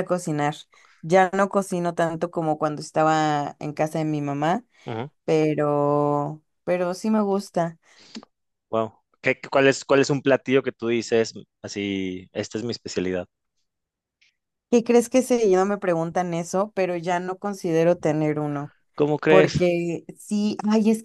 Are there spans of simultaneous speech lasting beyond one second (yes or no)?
no